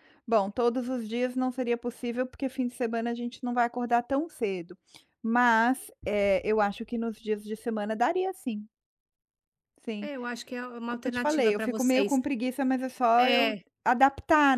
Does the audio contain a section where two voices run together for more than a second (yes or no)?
yes